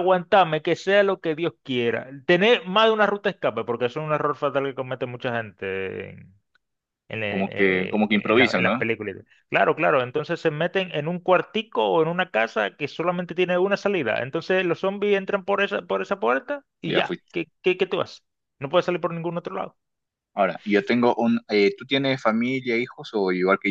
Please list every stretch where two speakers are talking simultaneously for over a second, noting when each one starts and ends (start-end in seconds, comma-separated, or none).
7.3-8.8